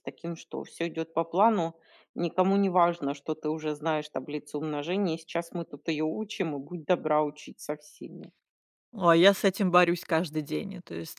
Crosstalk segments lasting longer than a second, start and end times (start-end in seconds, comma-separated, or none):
none